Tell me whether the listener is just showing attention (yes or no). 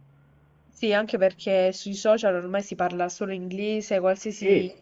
yes